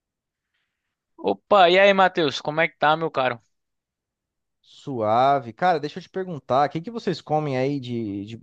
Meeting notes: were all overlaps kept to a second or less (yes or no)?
yes